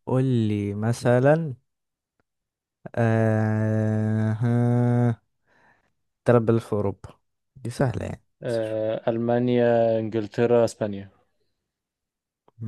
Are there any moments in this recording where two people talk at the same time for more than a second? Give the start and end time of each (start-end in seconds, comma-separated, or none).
none